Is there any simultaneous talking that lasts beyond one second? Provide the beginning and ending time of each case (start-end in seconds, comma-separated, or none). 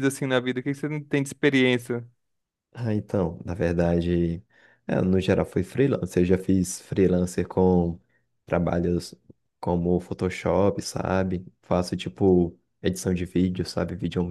none